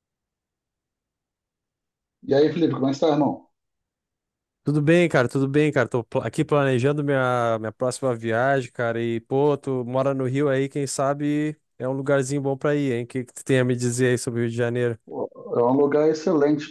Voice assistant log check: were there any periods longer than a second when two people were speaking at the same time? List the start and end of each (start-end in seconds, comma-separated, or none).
none